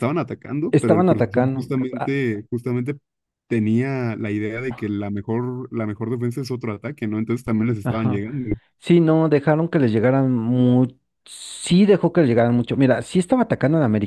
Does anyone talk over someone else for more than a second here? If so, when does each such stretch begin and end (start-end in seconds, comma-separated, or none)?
0.7-2.2